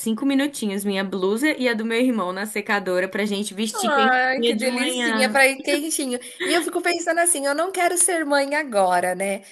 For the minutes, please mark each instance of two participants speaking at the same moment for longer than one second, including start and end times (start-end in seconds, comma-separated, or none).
3.9-5.4